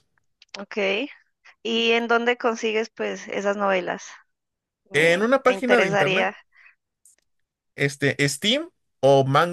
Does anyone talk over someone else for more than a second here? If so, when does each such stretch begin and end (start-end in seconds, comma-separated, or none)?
4.9-6.3